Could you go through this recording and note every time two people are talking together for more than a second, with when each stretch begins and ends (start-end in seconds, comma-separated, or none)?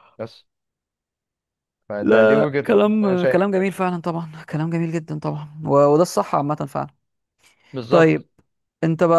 2.0-3.7